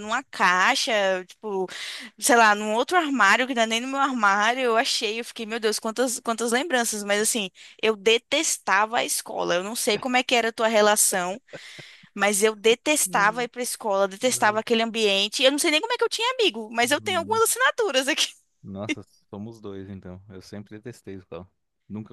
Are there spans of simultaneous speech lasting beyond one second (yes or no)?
no